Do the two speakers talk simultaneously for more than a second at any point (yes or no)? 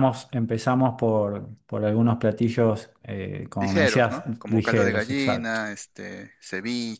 yes